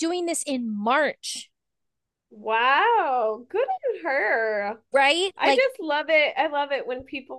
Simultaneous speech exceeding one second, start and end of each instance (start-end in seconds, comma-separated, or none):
none